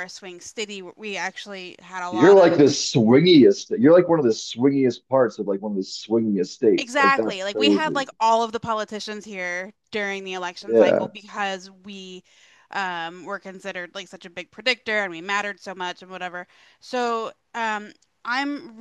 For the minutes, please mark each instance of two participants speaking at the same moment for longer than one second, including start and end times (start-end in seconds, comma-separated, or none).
6.8-8.0